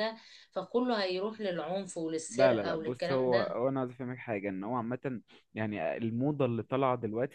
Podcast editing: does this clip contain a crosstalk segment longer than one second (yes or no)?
yes